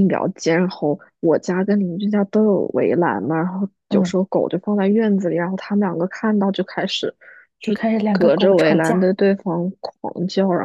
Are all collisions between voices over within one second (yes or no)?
no